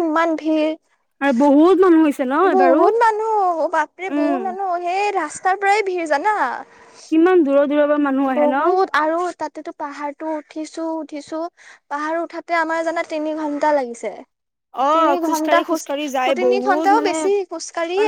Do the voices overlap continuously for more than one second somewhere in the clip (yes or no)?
yes